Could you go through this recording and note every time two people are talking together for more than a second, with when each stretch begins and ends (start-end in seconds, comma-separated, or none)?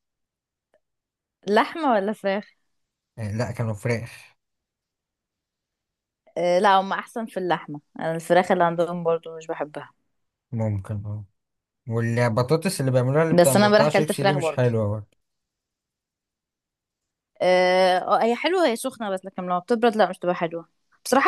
13.4-14.7